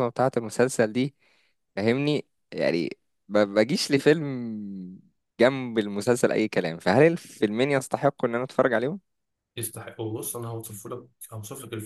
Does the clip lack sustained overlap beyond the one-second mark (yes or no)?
yes